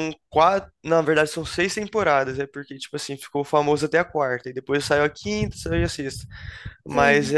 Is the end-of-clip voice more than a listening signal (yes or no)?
no